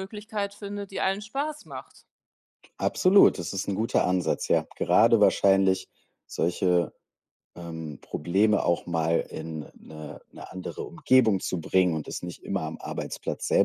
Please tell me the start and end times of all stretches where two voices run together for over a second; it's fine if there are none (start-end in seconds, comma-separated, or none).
none